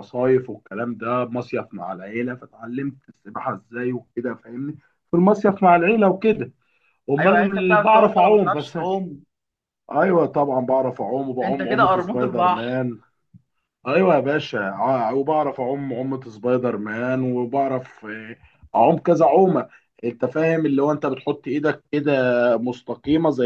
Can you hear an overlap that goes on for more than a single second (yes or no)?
yes